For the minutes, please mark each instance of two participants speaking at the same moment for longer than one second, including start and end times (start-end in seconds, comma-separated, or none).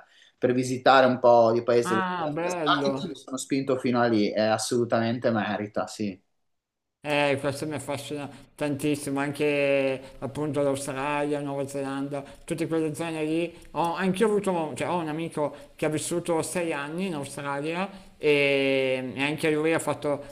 1.8-3.2